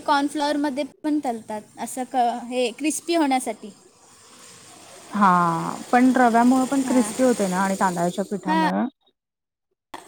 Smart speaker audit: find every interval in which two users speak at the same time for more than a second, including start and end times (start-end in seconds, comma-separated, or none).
none